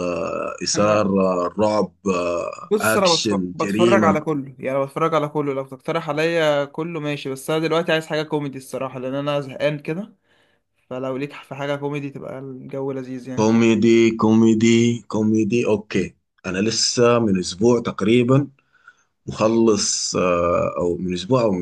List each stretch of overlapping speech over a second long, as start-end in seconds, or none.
2.6-4.2